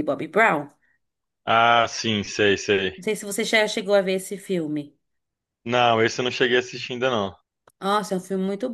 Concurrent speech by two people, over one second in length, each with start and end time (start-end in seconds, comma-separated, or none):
none